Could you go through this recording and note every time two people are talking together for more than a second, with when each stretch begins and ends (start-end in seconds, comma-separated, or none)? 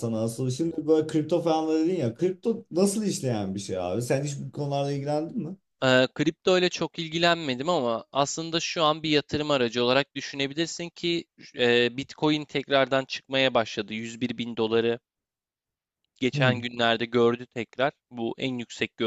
none